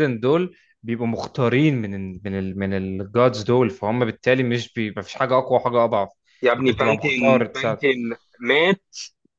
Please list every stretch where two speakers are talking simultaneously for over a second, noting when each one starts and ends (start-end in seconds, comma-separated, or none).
6.6-7.8